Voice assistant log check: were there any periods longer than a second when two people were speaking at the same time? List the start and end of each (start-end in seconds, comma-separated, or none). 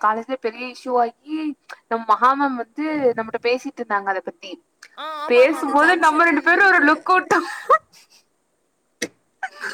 5.3-6.8